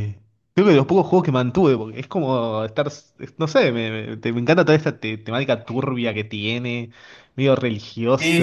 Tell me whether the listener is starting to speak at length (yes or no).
yes